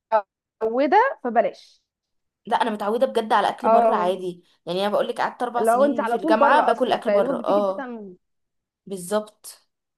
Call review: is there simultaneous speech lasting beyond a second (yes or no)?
yes